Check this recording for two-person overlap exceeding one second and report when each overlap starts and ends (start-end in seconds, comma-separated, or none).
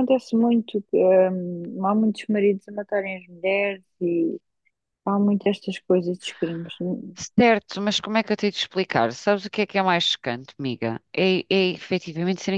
none